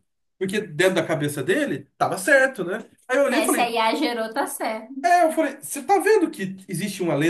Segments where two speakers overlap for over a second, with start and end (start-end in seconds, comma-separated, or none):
none